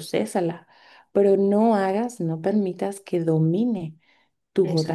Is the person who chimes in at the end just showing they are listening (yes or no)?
yes